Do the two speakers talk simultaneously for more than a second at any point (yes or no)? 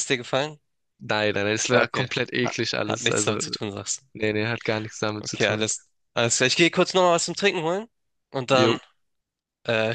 yes